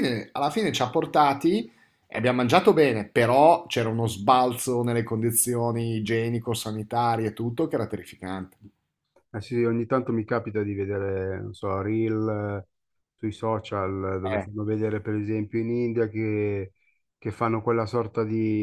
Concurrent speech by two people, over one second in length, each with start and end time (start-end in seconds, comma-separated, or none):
none